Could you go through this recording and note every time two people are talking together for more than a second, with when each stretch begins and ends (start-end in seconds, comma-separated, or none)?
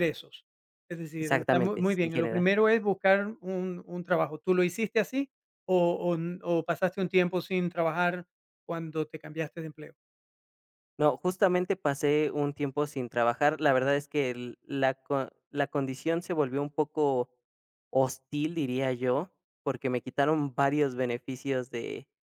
1.2-2.5